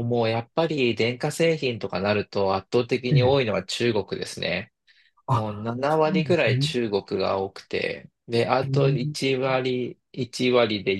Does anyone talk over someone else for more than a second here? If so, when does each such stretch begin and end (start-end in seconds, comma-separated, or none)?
5.3-6.7